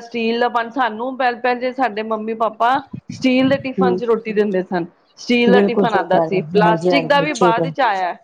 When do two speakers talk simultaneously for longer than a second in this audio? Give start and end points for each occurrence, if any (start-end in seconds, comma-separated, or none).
5.5-7.7